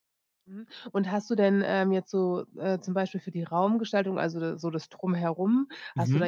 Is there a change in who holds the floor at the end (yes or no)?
no